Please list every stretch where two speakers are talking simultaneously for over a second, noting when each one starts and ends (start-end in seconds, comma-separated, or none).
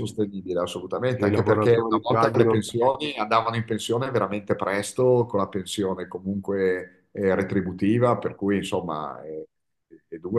1.1-2.6